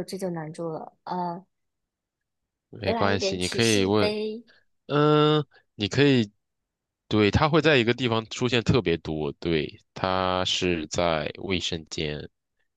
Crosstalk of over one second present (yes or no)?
yes